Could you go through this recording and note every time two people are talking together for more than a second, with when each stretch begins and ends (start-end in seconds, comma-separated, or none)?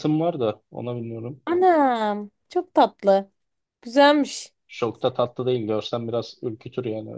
none